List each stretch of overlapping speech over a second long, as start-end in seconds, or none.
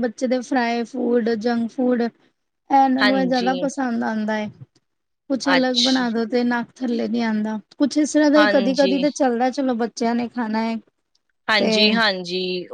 none